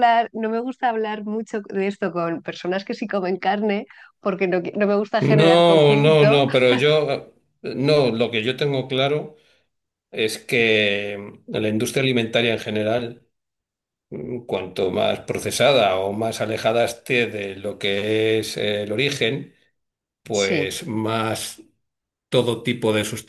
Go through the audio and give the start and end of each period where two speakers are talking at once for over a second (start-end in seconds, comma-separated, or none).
5.2-6.4